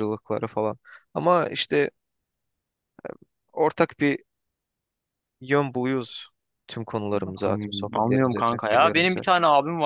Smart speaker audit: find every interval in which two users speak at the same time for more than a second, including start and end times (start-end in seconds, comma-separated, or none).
7.5-9.2